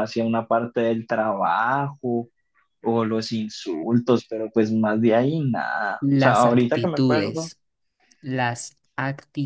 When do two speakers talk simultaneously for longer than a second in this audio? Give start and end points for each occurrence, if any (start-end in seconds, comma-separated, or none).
6.0-7.5